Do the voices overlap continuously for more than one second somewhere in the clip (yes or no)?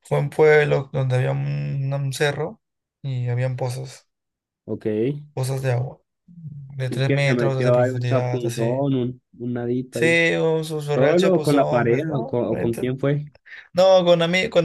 yes